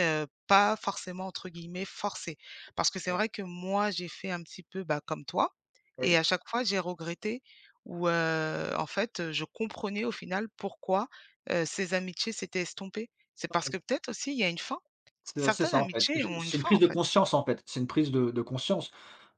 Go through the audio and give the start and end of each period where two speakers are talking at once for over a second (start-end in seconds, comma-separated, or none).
15.4-17.0